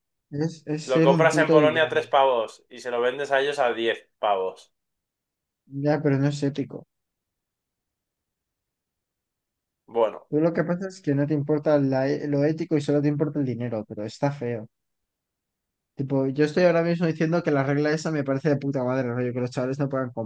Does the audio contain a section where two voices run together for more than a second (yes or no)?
yes